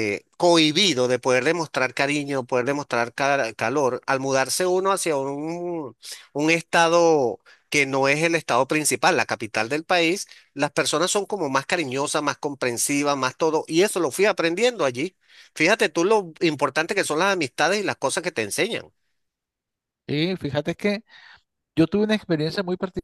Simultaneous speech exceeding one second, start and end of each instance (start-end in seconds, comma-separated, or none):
none